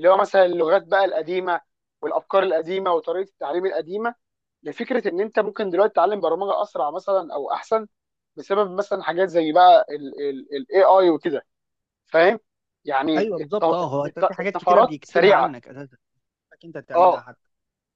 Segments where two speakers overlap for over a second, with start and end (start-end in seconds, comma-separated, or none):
13.2-15.6